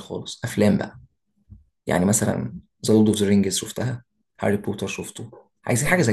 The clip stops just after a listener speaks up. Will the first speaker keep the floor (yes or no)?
no